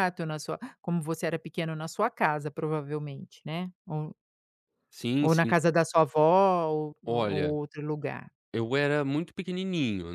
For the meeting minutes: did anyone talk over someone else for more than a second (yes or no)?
no